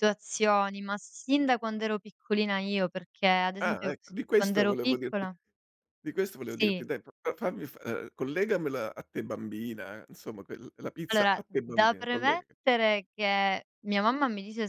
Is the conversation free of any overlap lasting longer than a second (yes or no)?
no